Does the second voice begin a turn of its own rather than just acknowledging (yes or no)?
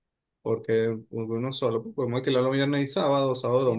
yes